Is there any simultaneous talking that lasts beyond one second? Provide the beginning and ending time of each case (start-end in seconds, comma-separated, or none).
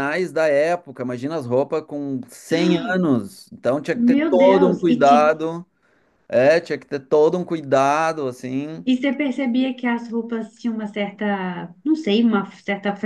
3.9-5.3